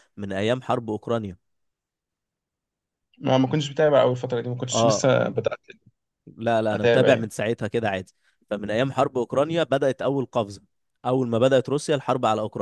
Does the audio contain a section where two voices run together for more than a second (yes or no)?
no